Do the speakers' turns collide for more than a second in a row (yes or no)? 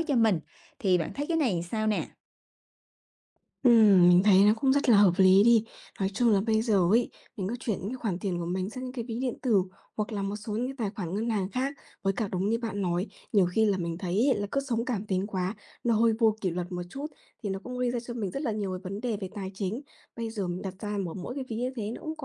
no